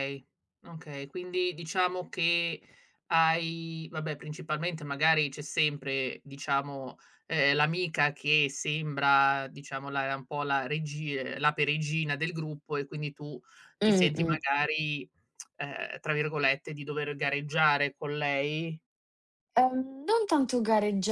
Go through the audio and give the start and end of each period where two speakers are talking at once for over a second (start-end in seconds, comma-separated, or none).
none